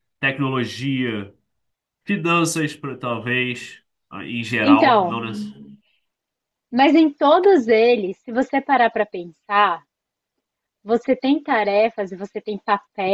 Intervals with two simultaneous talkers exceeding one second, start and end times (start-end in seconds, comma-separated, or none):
none